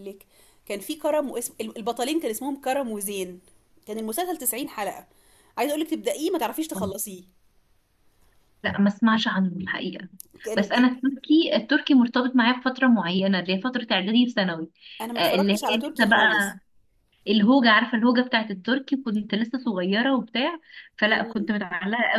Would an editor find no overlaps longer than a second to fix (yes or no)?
no